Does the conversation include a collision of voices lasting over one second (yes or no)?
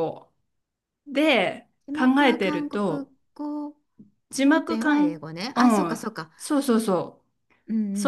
yes